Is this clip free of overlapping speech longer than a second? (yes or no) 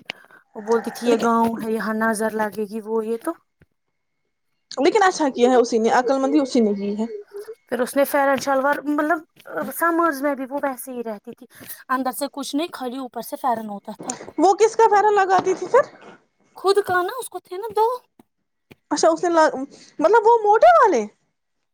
yes